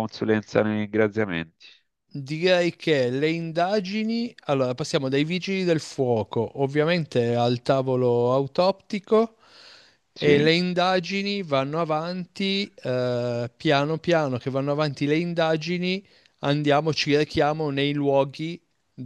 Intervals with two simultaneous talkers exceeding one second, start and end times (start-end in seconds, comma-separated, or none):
none